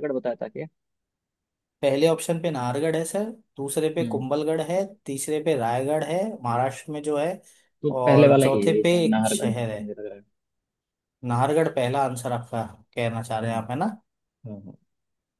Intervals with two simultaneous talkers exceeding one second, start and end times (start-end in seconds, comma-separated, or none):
8.0-9.8